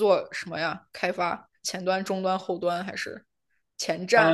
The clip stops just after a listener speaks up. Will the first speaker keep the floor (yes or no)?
no